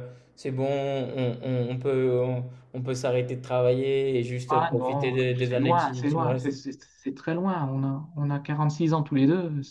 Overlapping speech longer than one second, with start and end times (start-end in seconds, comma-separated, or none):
4.5-6.6